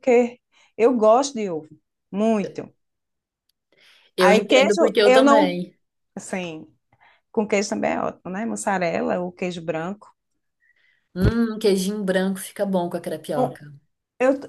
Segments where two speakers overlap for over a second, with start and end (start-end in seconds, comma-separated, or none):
4.2-5.6